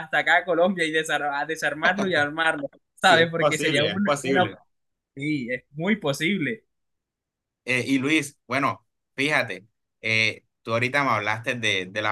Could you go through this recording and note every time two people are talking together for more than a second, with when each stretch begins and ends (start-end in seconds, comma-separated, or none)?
3.0-4.4